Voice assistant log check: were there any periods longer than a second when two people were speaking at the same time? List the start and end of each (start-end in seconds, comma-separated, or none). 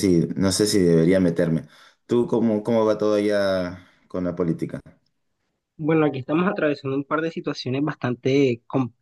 none